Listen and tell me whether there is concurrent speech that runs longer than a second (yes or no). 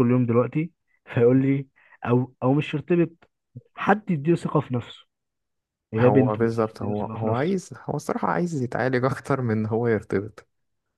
yes